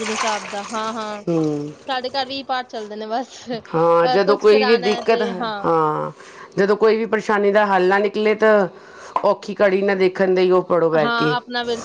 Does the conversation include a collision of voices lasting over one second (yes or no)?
yes